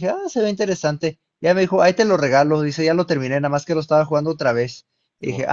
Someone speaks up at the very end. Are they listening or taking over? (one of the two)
listening